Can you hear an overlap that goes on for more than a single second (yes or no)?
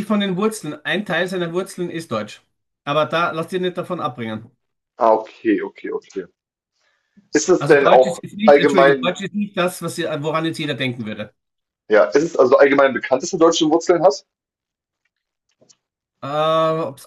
yes